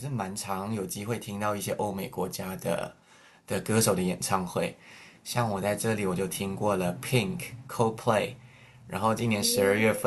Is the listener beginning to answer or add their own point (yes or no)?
no